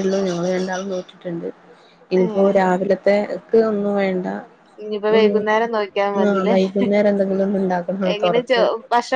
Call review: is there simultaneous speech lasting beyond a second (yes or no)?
no